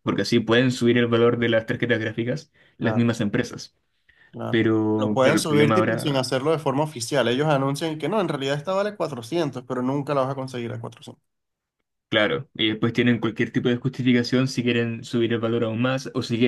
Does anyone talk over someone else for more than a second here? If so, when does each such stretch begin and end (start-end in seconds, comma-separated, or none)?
4.5-6.3